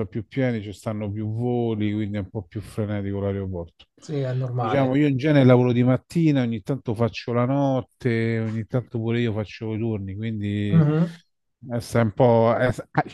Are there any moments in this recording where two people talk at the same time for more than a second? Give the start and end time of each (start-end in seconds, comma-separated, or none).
none